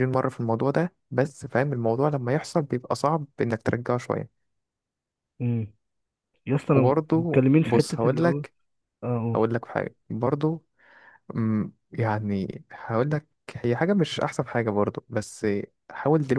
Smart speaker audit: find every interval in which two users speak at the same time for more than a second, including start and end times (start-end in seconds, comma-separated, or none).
6.7-8.4